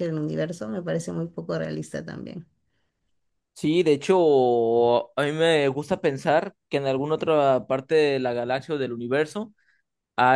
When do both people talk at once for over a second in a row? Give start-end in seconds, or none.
none